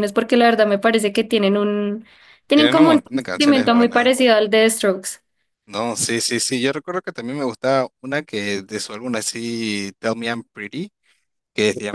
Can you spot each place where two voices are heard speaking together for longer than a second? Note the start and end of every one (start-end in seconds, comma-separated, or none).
2.5-4.1